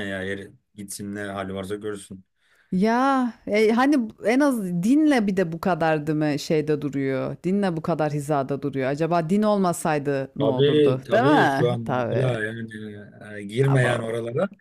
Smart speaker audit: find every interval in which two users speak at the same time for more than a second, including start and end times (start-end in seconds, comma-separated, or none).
10.4-12.2